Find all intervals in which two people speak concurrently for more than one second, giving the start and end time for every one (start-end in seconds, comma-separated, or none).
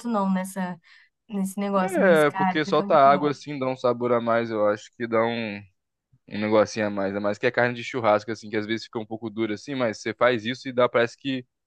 1.8-3.3